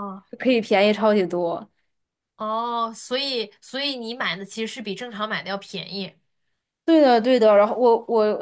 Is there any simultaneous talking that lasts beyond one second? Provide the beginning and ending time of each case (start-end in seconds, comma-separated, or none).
none